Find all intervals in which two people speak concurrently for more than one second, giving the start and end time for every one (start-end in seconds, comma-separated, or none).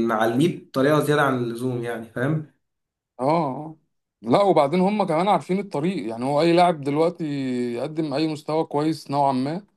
none